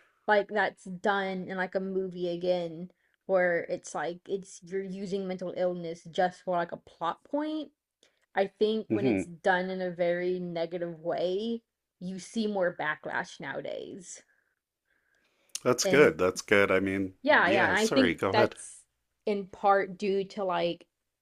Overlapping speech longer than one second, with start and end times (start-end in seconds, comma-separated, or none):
17.2-18.5